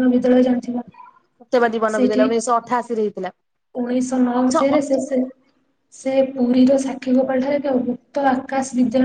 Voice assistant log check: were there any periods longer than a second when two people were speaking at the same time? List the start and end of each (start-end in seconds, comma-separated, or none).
none